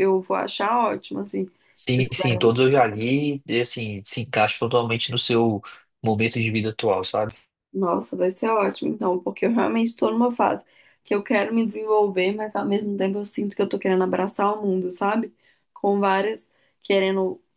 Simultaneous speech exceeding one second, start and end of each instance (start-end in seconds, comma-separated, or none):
none